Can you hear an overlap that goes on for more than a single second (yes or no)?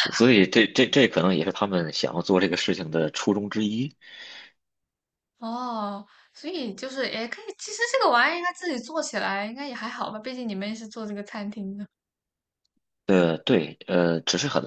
no